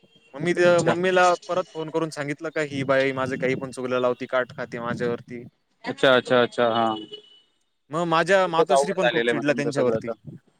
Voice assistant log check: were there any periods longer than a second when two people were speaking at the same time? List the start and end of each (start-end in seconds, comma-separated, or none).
8.3-10.1